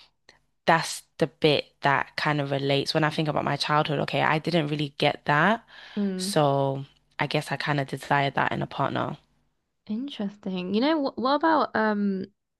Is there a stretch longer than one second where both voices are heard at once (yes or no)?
no